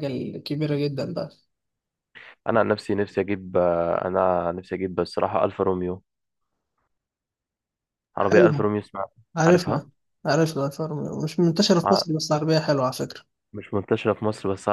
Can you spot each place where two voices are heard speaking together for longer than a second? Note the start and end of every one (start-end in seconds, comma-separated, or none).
none